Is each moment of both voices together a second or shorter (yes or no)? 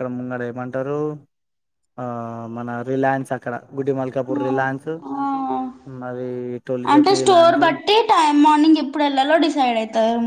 no